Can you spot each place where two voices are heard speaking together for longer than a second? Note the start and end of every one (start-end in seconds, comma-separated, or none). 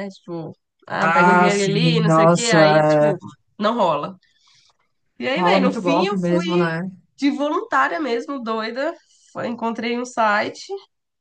1.0-3.1, 5.3-6.7